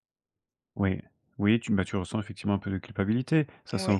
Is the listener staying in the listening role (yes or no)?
yes